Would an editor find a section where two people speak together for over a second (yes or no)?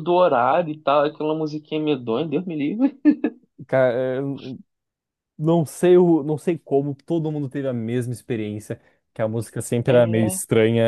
no